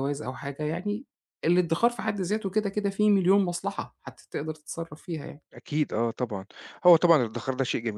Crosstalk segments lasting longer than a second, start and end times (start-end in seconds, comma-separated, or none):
none